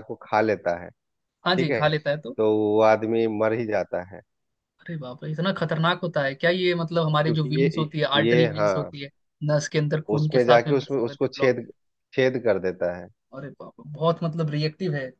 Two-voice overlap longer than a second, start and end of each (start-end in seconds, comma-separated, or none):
7.2-8.9, 10.1-11.5